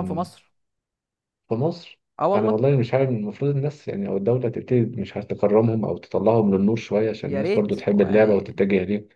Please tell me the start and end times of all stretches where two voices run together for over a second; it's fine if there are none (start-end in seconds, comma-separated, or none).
7.2-8.6